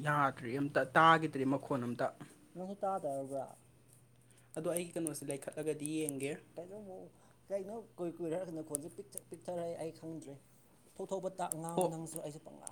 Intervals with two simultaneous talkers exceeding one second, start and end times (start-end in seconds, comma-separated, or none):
none